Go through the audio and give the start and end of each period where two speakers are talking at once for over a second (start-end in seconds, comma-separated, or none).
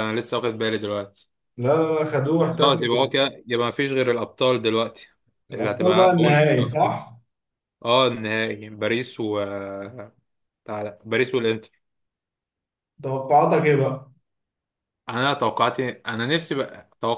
5.5-6.7